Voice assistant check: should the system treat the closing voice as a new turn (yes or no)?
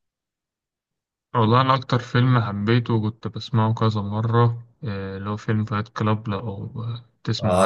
yes